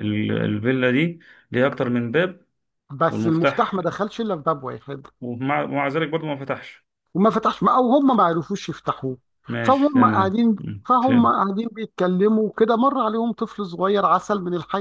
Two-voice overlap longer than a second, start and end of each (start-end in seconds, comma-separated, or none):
9.6-11.5